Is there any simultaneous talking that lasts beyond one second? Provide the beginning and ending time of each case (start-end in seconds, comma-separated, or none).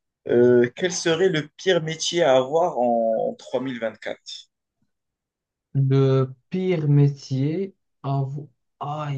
none